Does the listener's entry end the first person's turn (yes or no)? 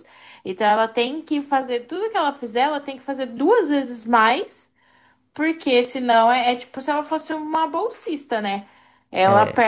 no